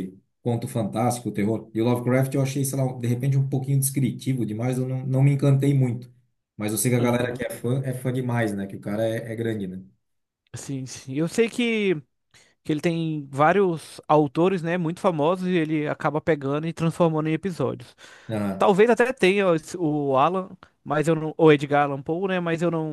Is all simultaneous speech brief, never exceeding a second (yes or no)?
yes